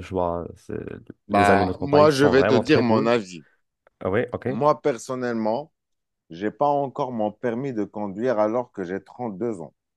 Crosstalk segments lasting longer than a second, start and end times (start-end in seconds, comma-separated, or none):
1.3-3.1